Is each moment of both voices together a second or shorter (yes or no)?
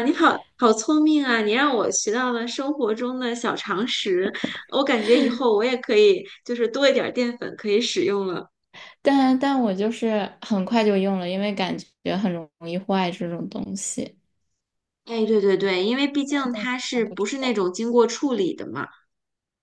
no